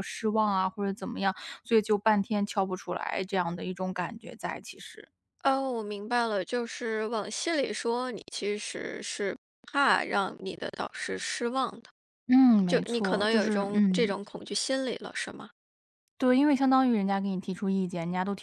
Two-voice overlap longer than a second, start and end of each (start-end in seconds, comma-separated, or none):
12.7-14.1